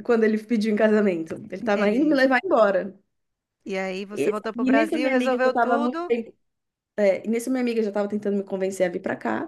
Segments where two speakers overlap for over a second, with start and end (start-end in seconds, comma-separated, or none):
4.1-6.2